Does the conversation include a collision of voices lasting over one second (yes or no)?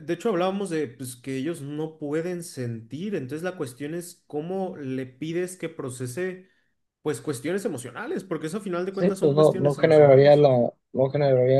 yes